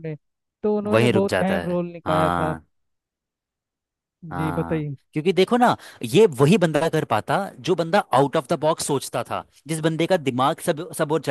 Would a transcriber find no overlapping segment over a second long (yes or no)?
no